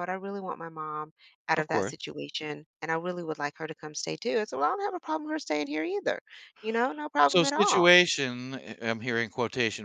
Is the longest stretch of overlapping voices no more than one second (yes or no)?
yes